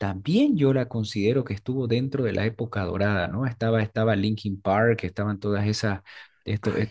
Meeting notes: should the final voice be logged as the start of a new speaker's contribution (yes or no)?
no